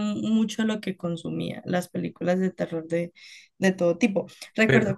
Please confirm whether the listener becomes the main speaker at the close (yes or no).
no